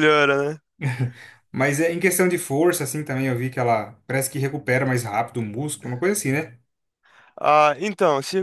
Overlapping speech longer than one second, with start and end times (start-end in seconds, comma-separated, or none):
none